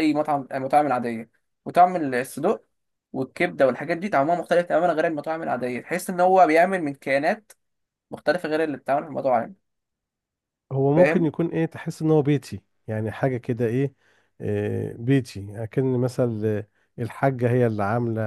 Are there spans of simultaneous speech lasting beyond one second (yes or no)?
no